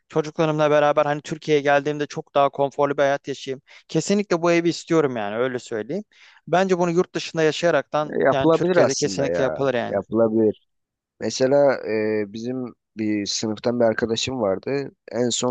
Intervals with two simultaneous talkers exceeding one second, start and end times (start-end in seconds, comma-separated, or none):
8.0-10.0